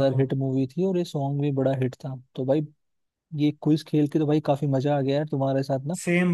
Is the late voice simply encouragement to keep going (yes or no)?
yes